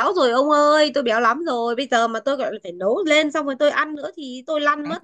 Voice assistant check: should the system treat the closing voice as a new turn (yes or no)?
yes